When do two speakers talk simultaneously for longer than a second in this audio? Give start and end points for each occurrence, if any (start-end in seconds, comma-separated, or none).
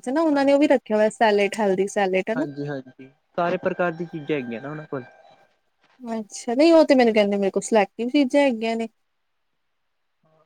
none